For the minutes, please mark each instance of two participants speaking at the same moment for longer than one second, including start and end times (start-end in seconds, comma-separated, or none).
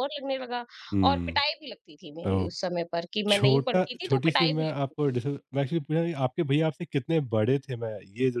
3.3-5.2